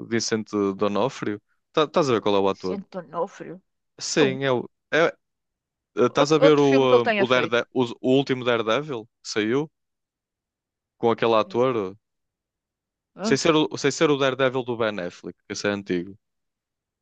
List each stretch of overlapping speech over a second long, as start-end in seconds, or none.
6.2-7.6